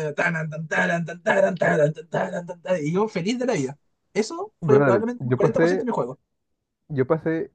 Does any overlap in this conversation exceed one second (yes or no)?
yes